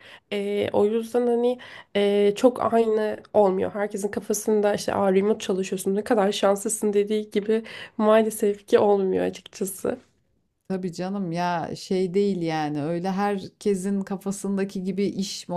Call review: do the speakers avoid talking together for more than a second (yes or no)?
yes